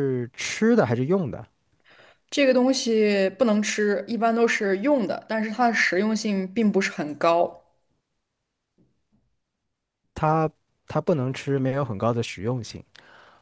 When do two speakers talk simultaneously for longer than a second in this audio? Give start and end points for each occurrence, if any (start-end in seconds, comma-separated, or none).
none